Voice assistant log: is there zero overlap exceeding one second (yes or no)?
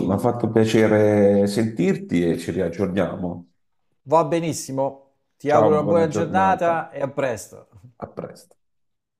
no